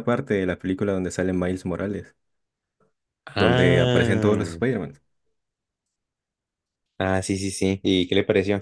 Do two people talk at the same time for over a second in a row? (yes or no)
yes